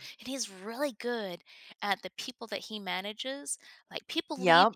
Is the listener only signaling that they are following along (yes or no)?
yes